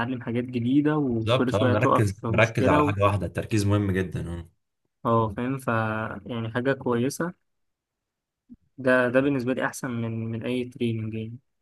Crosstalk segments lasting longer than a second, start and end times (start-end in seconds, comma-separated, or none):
1.1-2.9